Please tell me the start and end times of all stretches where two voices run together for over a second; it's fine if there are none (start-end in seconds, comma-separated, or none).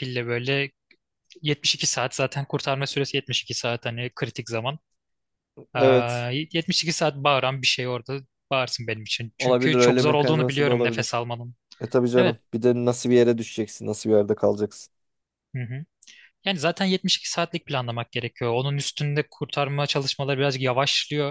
9.4-11.2